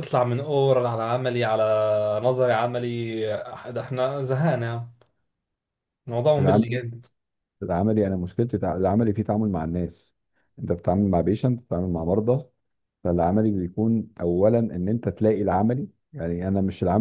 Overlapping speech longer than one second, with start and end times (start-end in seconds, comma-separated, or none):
none